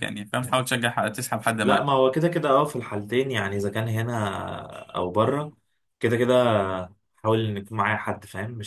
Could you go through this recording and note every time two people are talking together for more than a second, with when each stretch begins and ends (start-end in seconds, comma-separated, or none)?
none